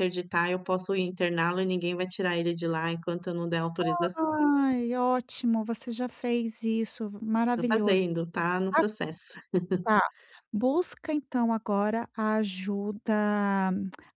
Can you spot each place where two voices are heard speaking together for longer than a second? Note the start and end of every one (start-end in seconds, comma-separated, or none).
none